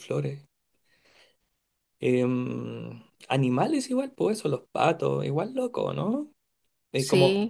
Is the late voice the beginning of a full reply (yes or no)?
no